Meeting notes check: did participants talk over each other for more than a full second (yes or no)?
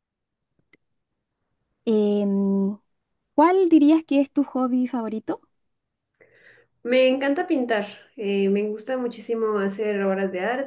no